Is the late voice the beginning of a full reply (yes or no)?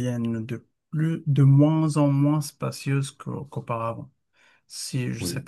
no